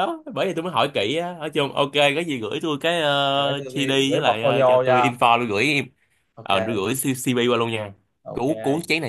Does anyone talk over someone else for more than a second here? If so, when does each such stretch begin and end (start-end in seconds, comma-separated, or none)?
3.4-5.1